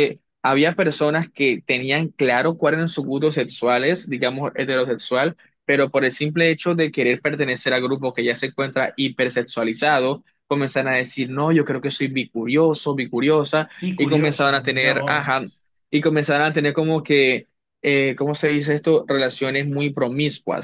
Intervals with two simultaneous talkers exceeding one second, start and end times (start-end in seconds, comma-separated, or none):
13.8-15.5